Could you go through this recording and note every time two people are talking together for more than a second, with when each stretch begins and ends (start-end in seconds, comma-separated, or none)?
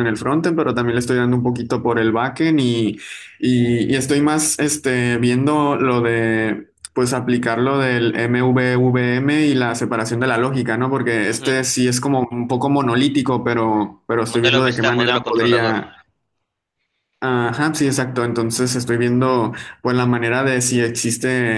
14.3-15.8